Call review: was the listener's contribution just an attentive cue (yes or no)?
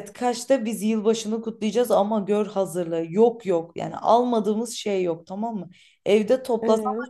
yes